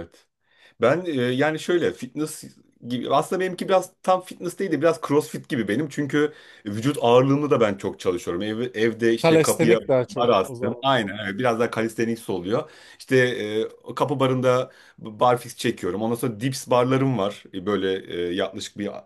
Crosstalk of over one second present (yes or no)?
yes